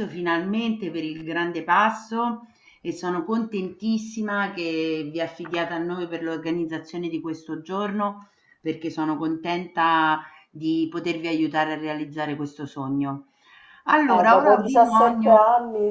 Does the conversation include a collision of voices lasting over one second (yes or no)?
yes